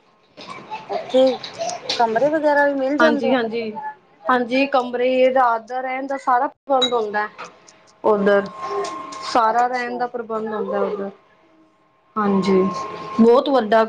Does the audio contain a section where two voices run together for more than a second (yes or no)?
no